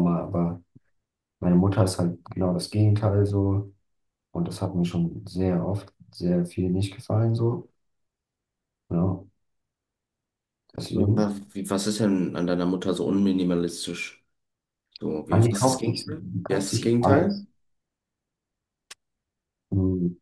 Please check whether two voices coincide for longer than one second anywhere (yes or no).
yes